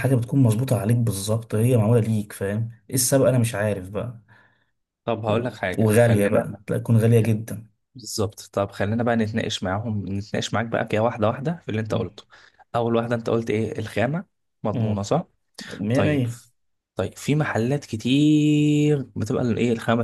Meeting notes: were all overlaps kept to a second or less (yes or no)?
no